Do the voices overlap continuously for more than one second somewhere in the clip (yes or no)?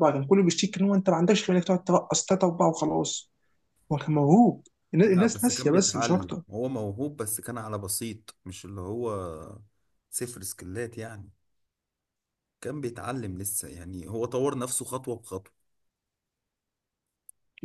yes